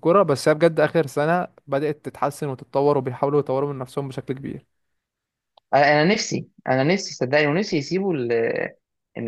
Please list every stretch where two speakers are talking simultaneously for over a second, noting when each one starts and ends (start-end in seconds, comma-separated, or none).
none